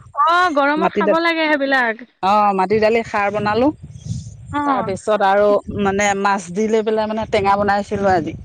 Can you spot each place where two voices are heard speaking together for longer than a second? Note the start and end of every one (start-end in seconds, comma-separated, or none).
none